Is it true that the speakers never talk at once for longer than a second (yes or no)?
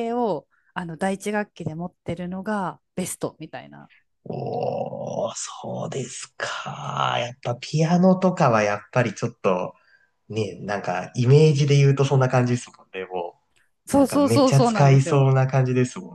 no